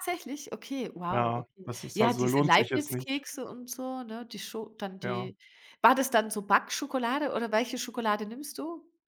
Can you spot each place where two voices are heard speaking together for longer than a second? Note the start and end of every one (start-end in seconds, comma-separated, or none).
1.1-3.2